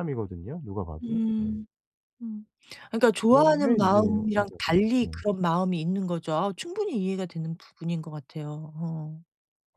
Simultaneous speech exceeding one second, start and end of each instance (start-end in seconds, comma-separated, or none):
3.3-5.2